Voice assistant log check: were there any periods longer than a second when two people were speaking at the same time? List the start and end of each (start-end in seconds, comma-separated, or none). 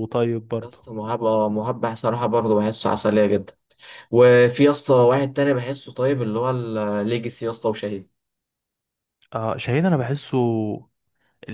none